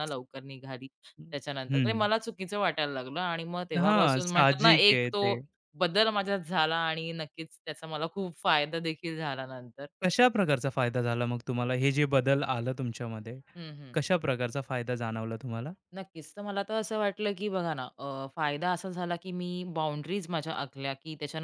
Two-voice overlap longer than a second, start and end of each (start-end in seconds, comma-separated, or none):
3.8-5.3